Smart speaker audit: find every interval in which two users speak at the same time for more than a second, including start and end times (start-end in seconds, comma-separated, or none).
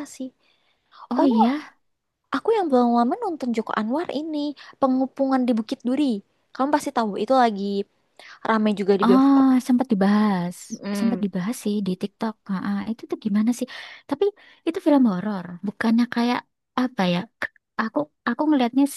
none